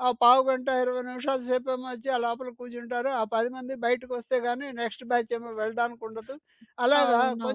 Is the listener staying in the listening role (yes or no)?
yes